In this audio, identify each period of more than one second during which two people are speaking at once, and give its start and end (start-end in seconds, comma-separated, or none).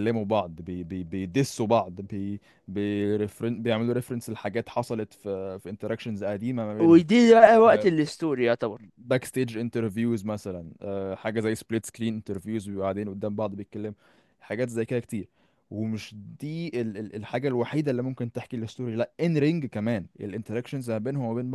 none